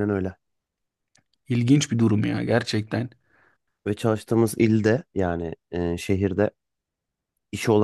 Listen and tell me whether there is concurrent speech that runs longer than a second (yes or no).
no